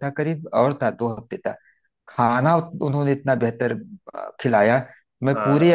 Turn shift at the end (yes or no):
no